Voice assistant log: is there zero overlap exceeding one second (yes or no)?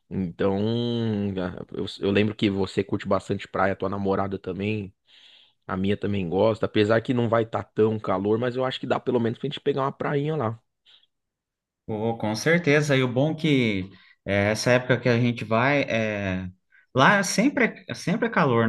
yes